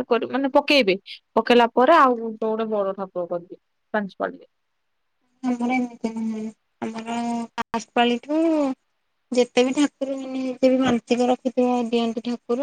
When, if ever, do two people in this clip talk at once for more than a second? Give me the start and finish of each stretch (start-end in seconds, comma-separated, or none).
none